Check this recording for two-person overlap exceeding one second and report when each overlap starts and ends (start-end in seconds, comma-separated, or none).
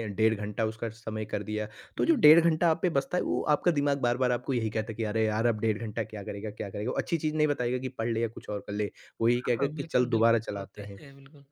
9.6-11.0